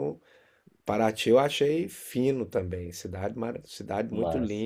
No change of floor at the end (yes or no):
yes